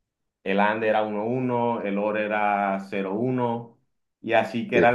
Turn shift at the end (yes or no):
no